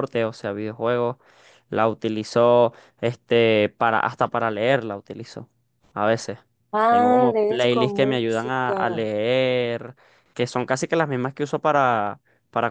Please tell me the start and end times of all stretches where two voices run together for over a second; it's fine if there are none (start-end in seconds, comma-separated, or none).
6.9-9.1